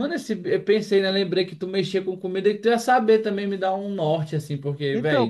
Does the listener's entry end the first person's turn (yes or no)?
yes